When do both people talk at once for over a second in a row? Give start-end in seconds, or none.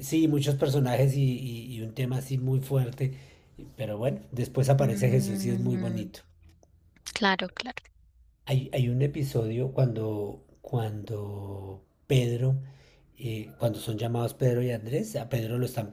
4.8-6.1